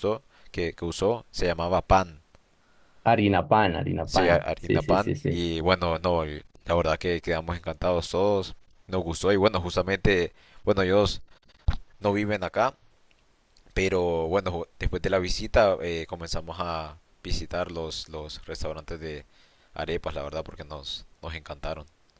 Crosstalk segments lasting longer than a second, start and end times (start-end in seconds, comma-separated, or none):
4.0-5.4